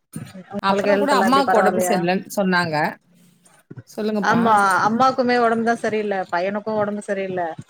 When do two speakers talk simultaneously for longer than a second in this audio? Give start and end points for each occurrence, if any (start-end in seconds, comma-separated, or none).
0.7-2.0